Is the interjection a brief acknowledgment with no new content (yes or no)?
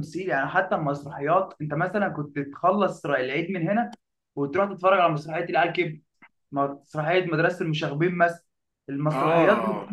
yes